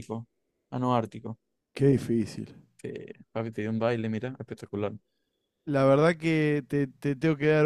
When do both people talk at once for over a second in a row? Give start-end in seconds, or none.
none